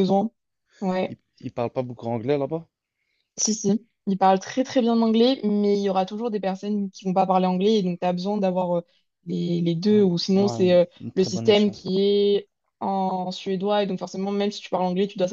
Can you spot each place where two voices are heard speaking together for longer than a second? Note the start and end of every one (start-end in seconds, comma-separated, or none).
9.9-11.7